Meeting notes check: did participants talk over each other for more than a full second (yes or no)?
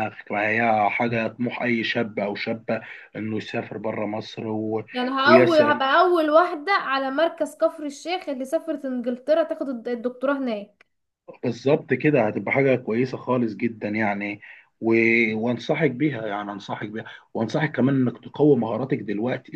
no